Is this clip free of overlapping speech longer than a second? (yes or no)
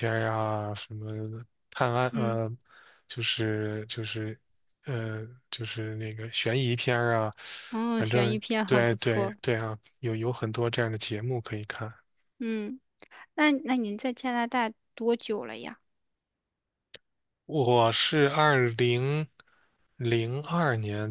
no